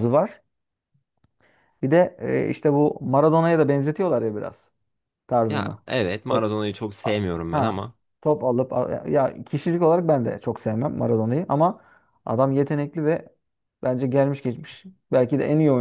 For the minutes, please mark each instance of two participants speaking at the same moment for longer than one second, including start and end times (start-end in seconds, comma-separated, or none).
none